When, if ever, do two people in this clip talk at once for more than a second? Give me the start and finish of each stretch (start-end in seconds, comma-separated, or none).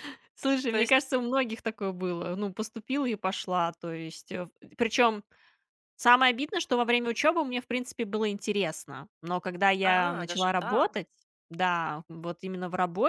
9.8-11.1